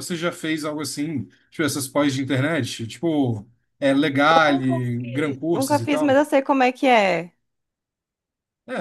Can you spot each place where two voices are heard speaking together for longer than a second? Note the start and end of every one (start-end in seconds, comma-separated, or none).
4.3-6.2